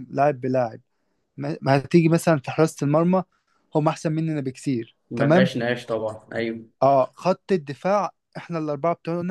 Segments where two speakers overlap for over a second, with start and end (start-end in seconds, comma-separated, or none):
none